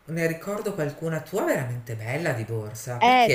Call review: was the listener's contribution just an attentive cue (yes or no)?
no